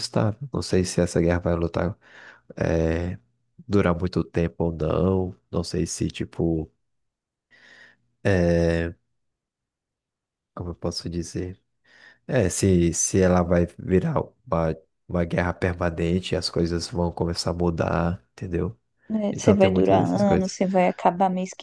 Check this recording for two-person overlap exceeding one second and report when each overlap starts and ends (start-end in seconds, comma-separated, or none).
19.3-20.5